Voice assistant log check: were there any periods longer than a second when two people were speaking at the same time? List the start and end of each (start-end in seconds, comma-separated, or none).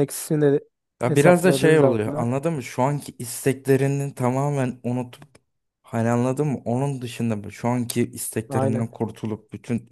1.1-2.3